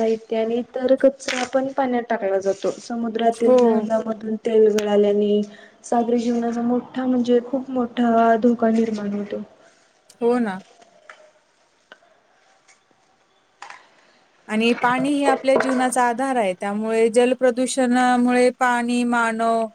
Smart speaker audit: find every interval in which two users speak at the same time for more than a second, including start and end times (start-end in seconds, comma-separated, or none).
none